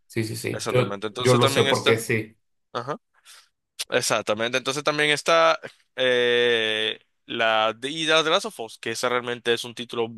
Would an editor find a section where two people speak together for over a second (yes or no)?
yes